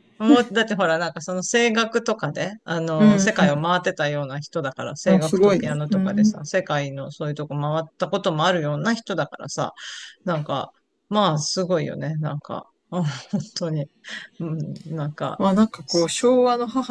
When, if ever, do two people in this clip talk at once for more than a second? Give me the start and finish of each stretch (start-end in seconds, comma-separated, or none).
5.1-6.4